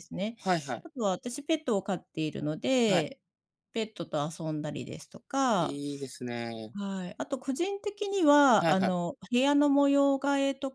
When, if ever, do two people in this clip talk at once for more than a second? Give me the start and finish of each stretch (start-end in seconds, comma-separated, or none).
none